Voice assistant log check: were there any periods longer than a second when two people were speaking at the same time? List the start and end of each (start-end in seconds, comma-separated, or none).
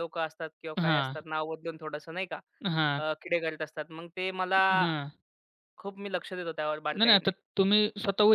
none